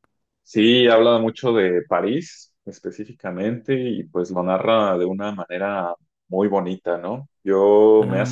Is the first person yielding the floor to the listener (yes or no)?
no